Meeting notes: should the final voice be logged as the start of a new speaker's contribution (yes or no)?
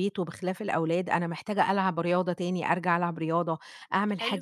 no